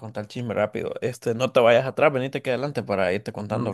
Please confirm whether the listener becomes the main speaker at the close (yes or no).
yes